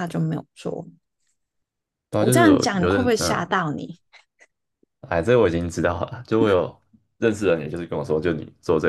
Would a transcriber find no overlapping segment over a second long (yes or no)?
no